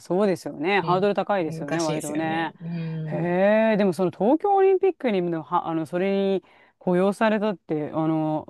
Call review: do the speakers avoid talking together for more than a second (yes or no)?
no